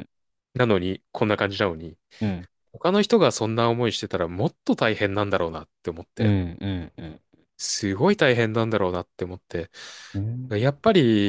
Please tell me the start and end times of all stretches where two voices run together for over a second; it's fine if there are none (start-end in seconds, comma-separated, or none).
none